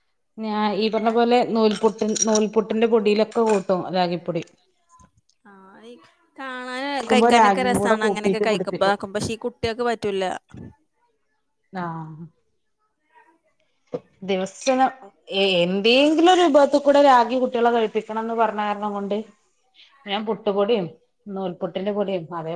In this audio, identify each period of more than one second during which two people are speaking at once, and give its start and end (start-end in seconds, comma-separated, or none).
7.0-8.9